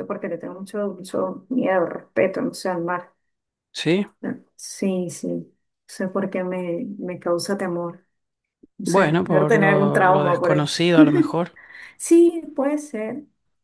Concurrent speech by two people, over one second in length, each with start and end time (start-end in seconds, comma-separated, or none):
8.8-10.7